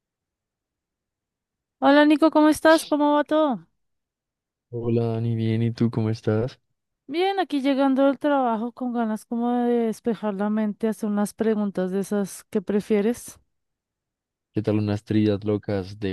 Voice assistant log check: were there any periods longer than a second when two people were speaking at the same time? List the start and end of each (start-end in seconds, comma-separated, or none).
none